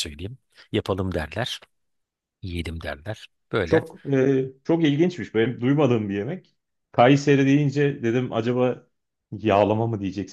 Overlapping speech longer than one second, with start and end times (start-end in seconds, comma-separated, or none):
none